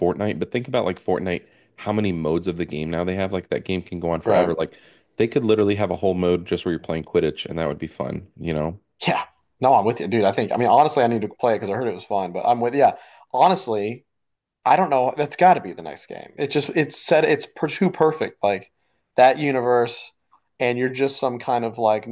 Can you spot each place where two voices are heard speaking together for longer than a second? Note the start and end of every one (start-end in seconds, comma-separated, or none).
none